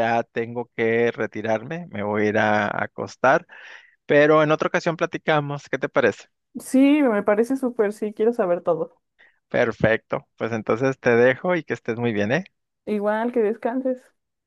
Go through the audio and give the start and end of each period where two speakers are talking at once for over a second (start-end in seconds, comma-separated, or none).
none